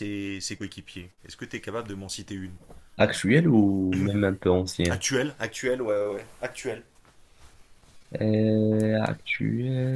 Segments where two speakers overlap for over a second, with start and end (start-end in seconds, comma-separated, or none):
none